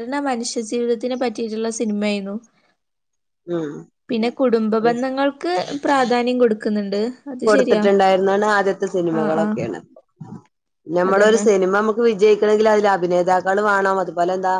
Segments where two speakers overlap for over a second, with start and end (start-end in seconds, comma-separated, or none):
none